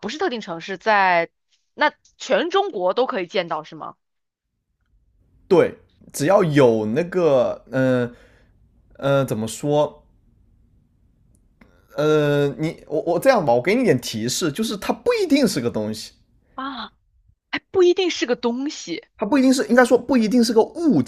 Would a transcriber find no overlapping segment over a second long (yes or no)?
yes